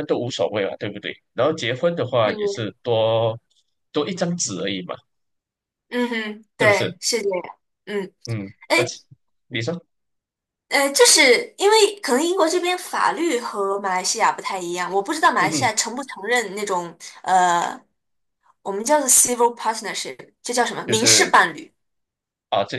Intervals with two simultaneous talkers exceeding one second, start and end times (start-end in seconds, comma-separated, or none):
none